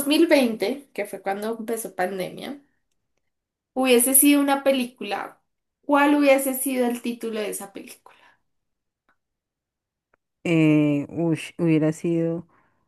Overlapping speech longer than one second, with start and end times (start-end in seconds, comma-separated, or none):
none